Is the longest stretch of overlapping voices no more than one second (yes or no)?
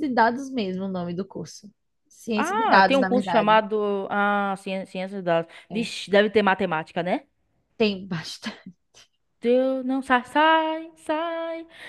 no